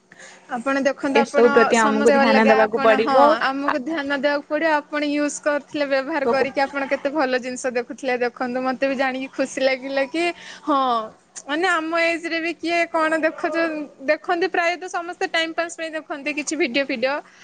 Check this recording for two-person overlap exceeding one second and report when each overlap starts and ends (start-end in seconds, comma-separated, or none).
1.2-3.1